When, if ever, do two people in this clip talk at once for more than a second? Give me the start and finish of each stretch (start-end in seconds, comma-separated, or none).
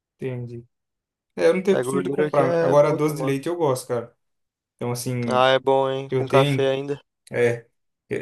1.7-3.4